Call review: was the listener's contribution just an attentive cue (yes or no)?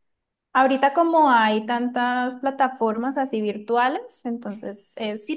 no